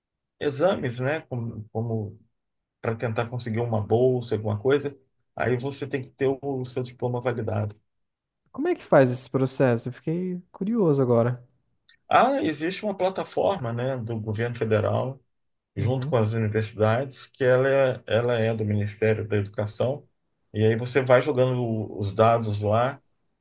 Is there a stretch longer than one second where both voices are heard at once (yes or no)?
no